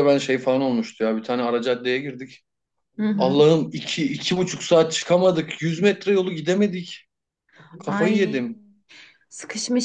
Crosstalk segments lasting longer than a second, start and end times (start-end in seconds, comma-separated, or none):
none